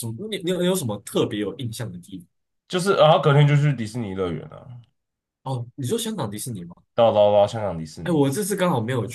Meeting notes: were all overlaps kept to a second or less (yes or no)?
yes